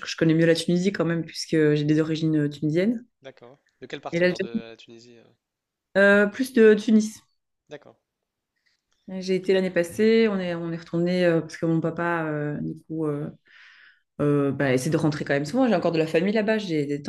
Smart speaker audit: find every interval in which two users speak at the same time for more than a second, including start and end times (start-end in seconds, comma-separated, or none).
none